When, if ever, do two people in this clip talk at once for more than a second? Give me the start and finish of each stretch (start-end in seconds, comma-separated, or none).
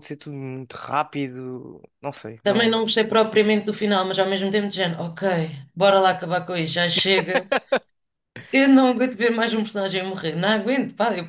none